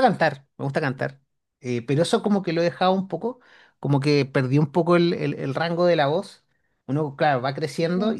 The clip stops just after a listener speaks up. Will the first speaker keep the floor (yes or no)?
yes